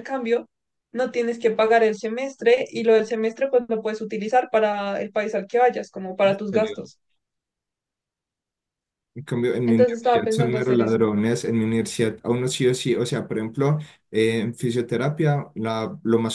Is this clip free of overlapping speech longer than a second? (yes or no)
no